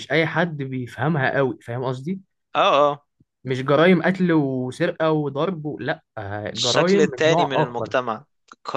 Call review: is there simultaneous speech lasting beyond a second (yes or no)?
yes